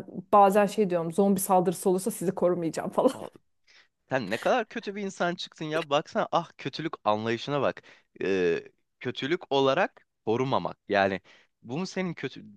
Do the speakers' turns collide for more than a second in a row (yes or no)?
no